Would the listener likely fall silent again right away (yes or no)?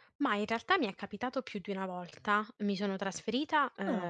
yes